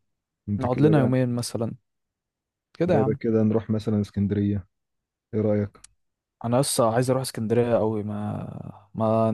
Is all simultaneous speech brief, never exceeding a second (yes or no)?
yes